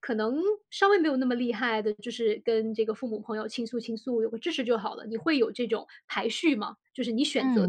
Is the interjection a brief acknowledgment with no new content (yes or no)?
no